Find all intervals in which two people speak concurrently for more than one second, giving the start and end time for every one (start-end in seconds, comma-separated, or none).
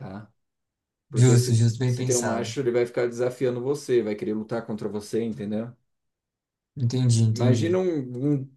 1.1-2.5